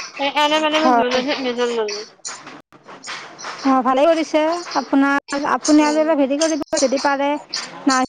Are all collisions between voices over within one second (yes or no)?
yes